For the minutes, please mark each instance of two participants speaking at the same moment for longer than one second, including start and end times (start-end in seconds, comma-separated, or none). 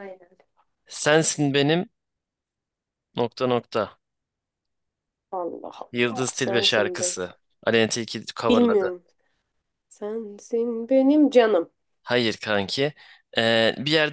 5.9-7.1